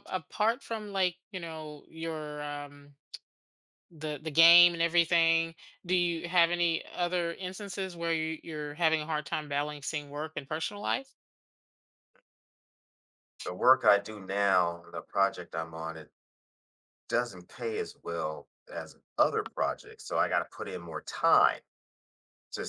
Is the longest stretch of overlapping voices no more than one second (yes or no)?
yes